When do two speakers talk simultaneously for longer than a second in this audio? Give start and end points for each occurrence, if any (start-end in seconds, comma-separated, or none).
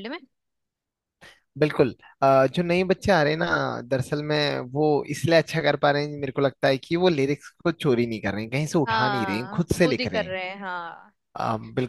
8.9-10.3